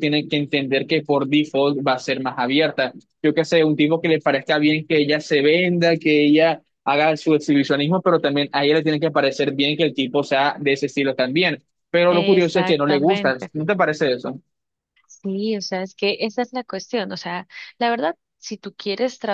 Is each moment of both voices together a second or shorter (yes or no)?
no